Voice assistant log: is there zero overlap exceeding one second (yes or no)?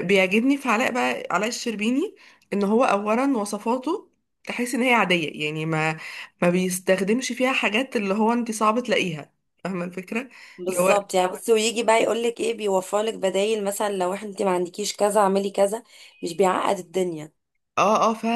yes